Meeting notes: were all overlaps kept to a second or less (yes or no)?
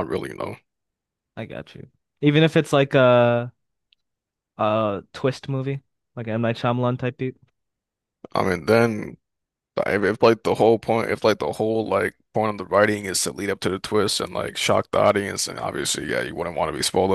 yes